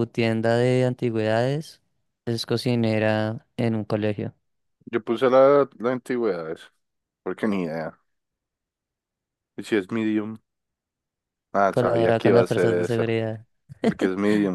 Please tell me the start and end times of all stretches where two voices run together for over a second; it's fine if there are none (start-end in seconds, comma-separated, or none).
11.7-13.0